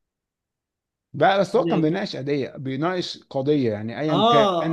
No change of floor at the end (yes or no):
no